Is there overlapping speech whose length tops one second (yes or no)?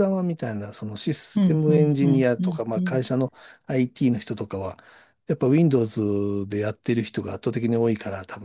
yes